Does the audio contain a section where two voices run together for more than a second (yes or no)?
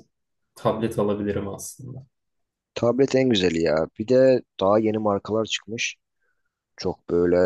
no